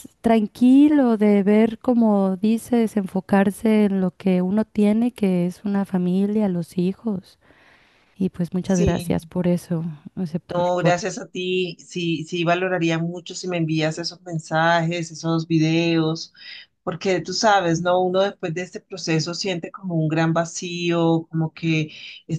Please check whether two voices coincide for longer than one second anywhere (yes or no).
no